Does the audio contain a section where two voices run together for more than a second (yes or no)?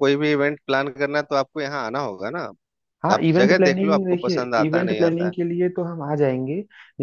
yes